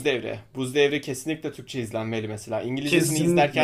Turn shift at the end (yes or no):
yes